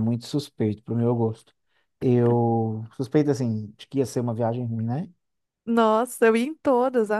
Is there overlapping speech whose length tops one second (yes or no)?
no